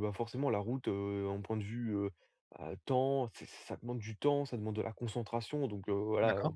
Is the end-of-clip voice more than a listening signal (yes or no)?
no